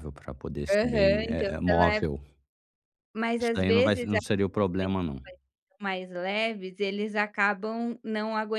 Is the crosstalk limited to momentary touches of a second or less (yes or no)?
no